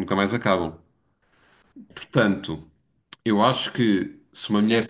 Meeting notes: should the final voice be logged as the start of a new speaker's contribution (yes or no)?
yes